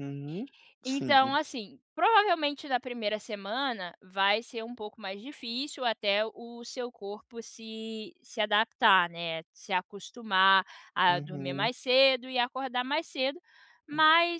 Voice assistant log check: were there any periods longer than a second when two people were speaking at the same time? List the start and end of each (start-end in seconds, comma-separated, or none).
none